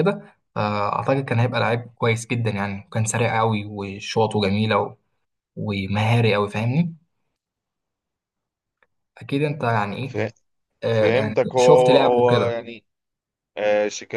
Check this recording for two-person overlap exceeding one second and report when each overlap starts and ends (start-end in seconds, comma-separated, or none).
10.9-12.5